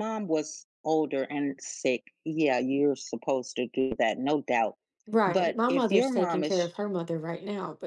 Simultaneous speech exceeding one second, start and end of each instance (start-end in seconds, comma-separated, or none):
5.2-6.7